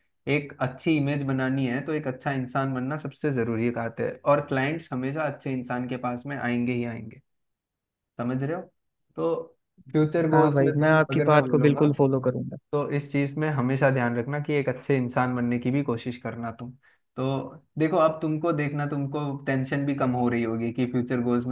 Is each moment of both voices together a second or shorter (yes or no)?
no